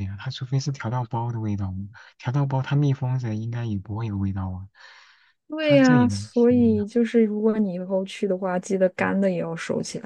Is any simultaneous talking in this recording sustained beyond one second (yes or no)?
yes